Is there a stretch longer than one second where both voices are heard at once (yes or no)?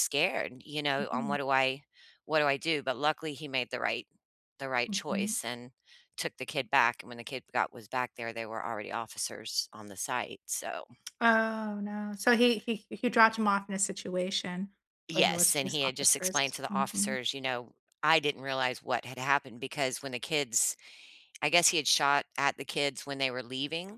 yes